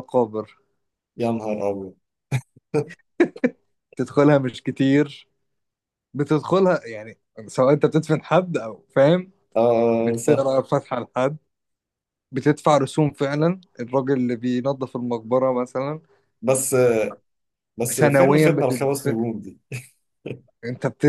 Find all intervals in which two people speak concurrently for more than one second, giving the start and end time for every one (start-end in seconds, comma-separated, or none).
17.9-19.1